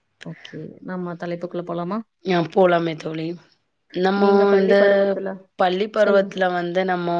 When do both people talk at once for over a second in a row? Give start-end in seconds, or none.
none